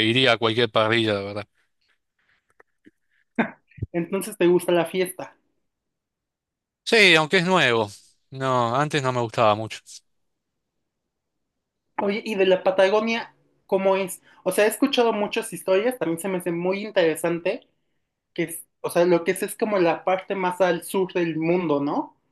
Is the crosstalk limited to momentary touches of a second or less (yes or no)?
yes